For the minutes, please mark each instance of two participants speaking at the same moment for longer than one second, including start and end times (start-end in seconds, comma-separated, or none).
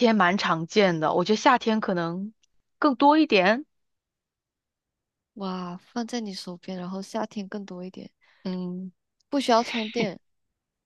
none